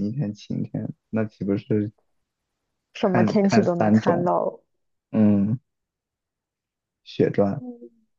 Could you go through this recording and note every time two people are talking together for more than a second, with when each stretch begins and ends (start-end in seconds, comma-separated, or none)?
3.0-4.3